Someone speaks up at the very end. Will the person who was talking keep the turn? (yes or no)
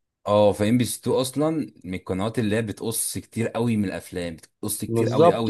no